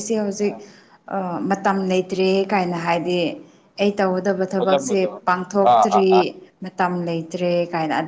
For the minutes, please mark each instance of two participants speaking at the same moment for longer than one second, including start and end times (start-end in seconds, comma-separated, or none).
4.6-6.1